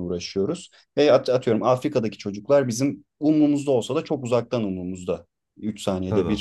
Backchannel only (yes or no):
yes